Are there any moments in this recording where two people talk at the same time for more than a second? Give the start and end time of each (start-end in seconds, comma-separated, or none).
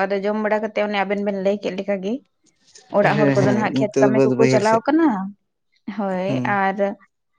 3.0-4.8